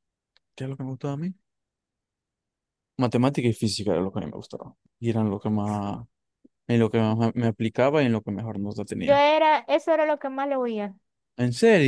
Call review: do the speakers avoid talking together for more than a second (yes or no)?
yes